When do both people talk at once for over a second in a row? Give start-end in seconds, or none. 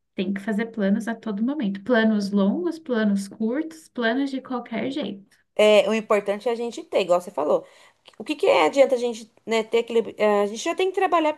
none